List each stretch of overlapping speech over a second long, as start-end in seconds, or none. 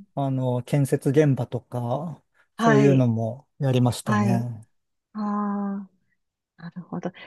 none